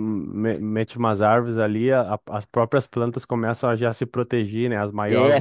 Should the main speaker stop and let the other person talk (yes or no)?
yes